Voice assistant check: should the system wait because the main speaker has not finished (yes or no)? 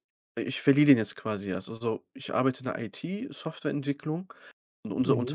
yes